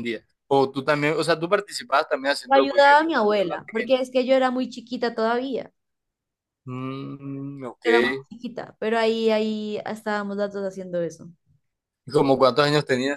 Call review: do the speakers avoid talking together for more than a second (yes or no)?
no